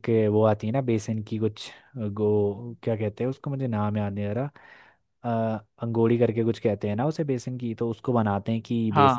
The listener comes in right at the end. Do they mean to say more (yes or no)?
no